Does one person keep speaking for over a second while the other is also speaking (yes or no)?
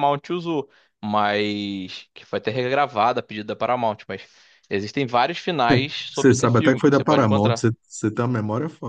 yes